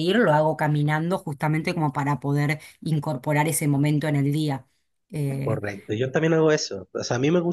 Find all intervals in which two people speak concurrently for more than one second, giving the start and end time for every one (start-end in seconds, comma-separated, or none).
none